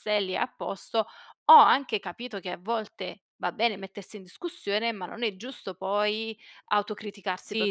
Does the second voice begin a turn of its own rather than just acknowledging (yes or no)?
yes